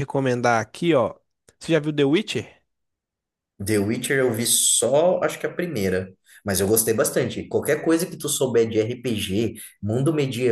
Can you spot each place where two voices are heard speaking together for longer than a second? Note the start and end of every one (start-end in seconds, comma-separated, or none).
none